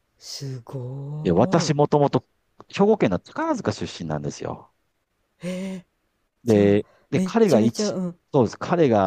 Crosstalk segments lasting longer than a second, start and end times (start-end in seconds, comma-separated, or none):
6.4-8.0